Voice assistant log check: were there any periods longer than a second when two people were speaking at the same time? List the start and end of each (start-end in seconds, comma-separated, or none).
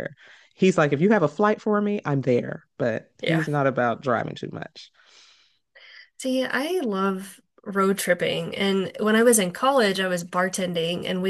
none